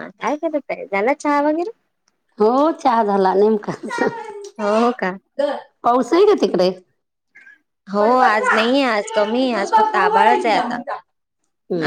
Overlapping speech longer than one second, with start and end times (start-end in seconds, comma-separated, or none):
9.5-10.8